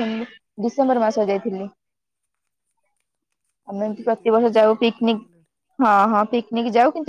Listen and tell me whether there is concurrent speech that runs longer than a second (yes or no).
yes